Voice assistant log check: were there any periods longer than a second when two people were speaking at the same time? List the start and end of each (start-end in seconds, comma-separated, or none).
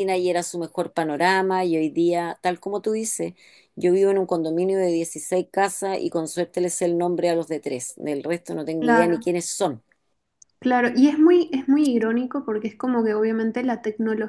none